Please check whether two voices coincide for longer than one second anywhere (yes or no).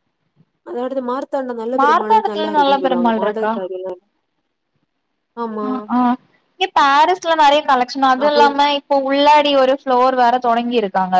yes